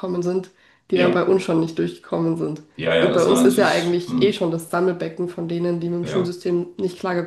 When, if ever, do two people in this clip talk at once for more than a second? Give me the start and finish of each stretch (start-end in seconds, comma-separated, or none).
2.8-4.4